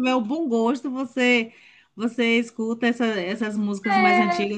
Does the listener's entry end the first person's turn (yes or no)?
no